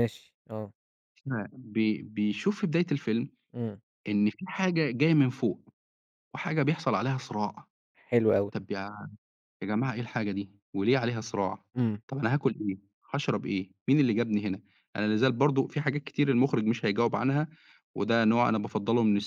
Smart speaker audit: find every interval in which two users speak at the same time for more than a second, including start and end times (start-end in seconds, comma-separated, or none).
none